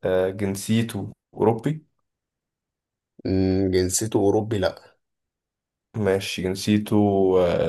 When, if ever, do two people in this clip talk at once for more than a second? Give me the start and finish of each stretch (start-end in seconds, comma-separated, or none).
none